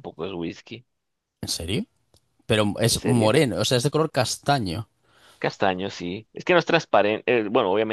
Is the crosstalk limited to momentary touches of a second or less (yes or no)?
yes